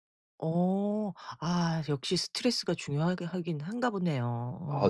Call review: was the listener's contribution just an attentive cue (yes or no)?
no